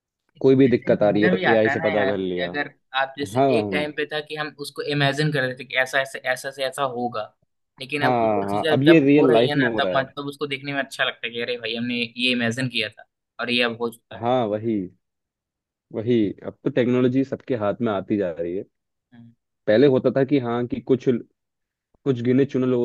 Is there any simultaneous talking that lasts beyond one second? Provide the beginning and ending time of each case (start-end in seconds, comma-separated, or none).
0.7-2.5, 8.0-10.1